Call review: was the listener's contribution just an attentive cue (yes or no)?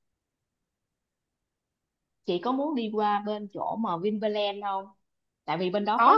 yes